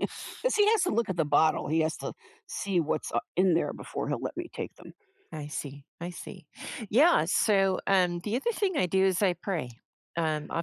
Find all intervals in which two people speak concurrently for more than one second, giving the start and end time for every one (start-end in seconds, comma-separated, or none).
none